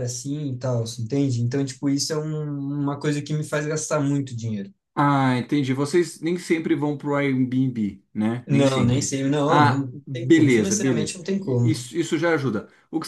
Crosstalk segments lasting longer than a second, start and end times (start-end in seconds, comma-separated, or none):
8.5-11.9